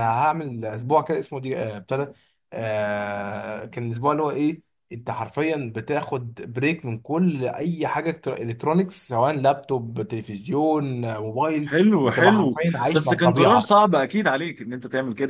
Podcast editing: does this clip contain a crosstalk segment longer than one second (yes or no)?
yes